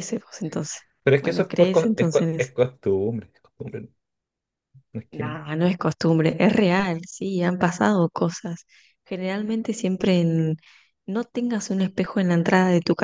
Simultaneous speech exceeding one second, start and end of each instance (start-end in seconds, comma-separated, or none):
1.2-2.5